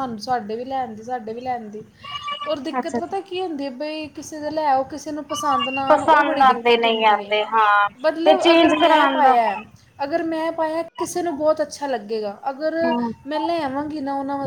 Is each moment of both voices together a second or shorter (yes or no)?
no